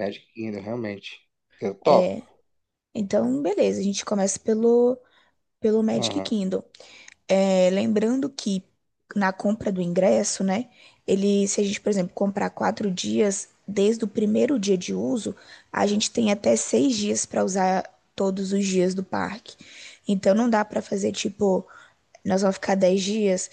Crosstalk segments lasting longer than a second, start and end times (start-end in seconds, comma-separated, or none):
none